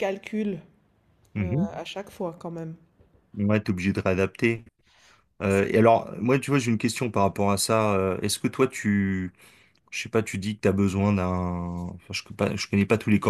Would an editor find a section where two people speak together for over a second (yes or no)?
no